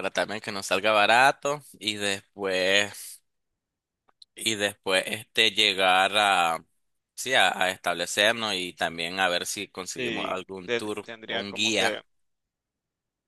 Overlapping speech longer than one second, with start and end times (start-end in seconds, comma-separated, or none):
10.0-12.0